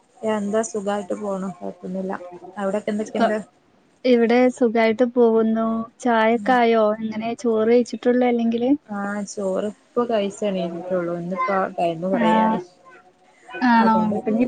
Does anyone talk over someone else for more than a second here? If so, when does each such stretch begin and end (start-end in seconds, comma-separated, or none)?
none